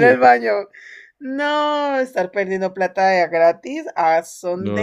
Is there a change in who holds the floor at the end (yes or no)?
yes